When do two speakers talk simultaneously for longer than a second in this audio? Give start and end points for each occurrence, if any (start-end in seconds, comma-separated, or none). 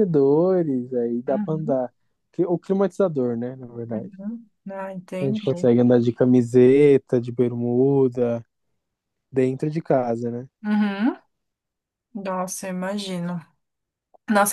none